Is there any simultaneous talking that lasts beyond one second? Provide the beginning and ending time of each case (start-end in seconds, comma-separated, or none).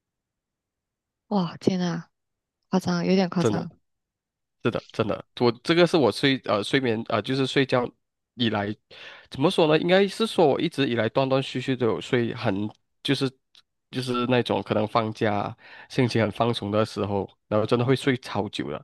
none